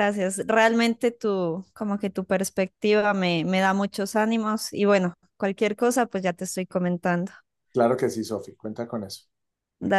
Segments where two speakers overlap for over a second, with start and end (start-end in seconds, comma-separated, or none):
none